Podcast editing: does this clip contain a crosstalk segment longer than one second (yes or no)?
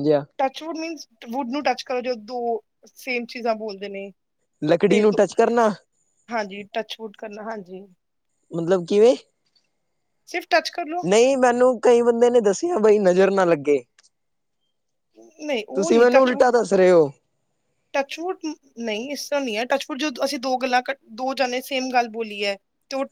no